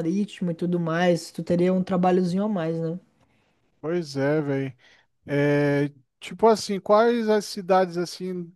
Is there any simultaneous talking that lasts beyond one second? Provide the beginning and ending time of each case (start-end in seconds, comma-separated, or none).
none